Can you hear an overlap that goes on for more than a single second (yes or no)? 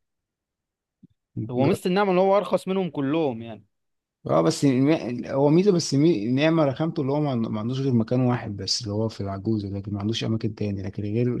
no